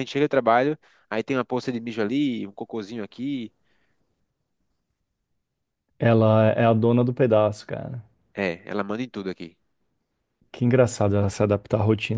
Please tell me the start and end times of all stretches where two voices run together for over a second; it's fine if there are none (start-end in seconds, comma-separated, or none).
none